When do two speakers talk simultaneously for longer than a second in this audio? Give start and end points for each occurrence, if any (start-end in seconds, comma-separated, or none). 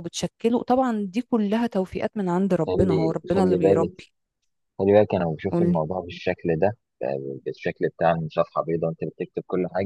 2.6-3.9